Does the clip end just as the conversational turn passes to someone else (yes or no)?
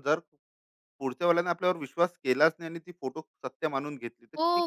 yes